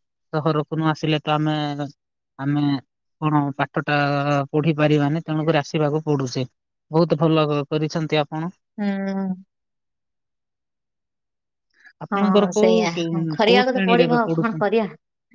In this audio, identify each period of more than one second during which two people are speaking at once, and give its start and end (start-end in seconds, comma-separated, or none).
12.1-14.6